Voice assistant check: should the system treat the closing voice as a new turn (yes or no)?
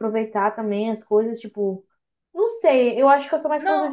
no